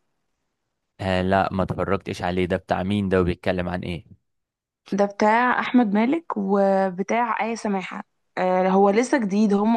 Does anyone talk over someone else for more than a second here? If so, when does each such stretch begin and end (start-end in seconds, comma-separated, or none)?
none